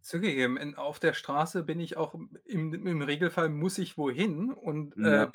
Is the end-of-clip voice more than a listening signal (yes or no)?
no